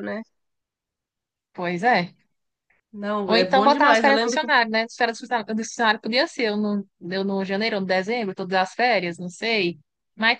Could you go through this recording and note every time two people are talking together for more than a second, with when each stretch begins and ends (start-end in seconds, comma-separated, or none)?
3.2-4.5